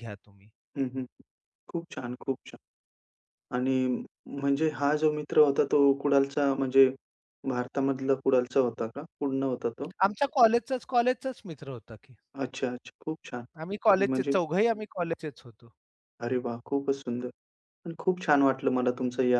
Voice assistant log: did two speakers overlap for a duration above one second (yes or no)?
no